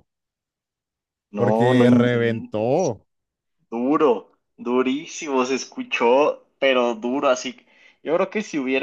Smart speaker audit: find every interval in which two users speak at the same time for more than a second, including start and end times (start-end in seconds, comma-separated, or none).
1.4-2.9